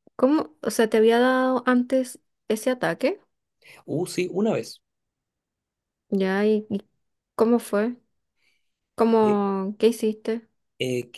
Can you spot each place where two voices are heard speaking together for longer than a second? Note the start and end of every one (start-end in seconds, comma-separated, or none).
none